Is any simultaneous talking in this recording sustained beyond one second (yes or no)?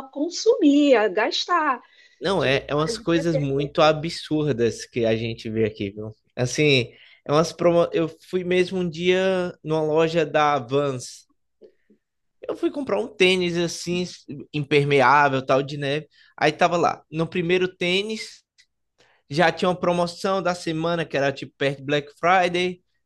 yes